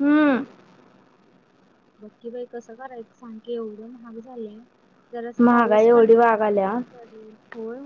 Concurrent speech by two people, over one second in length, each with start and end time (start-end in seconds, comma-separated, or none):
5.4-6.7